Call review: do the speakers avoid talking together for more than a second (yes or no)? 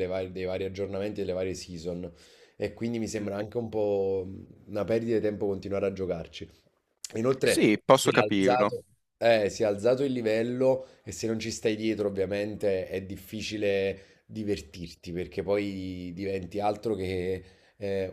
no